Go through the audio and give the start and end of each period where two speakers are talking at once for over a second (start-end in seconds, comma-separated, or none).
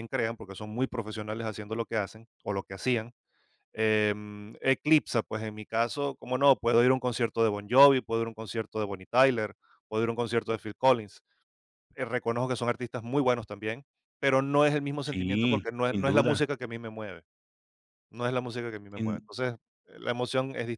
15.0-16.4